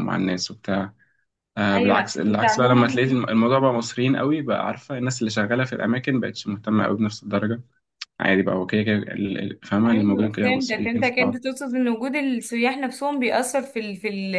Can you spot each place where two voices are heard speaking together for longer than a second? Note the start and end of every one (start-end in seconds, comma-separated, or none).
1.7-3.0, 9.8-11.4